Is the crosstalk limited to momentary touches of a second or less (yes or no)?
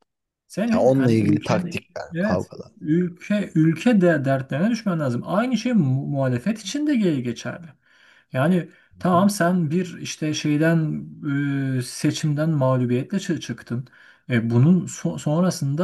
no